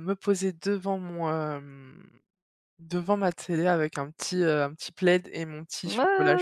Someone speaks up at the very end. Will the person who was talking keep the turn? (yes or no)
no